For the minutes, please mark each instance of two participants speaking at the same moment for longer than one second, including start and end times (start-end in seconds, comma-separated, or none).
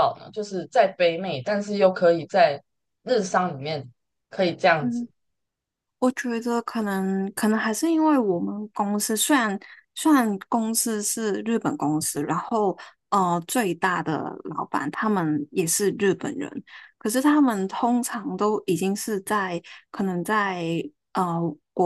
none